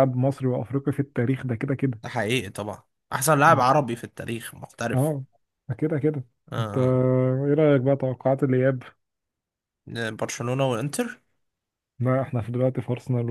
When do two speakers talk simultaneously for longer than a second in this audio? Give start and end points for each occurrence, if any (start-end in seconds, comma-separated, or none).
none